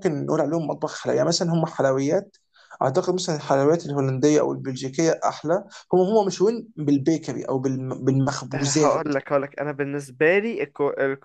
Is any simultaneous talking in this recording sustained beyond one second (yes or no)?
no